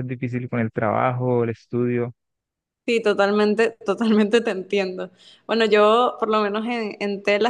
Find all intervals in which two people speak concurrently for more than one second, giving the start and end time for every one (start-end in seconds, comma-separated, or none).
none